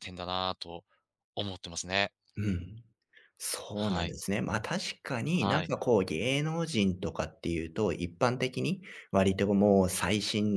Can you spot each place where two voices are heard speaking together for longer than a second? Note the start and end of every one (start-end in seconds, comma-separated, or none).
none